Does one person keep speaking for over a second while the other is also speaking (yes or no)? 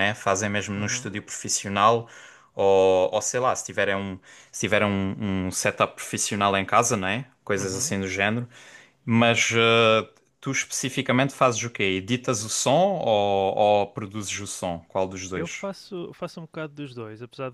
no